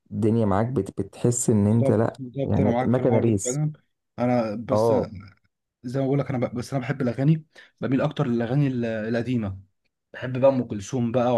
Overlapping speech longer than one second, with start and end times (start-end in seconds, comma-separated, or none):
1.7-3.6